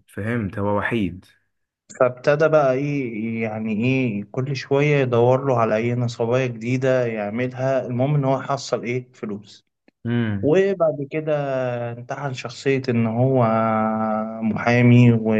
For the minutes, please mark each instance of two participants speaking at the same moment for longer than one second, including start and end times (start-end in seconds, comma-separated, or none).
none